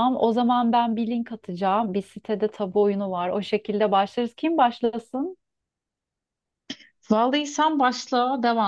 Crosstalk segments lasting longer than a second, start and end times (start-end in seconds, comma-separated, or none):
none